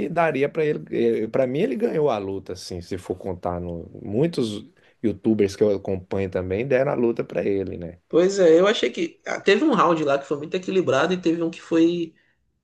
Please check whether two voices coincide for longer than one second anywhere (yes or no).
no